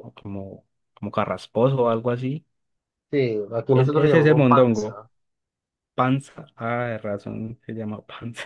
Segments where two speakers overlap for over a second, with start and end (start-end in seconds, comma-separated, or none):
3.7-5.0